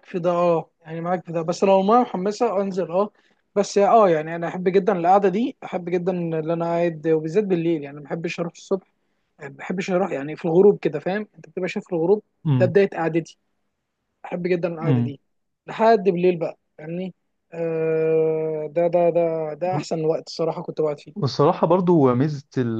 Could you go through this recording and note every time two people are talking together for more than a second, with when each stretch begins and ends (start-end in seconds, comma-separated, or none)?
none